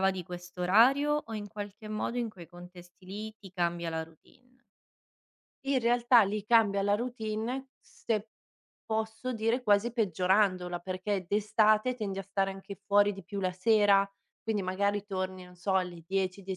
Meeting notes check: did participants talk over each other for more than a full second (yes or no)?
no